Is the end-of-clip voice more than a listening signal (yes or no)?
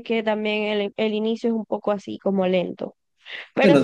yes